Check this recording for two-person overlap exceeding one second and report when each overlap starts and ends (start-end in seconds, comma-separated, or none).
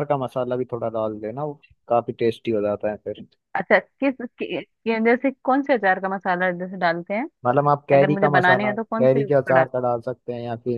7.9-9.7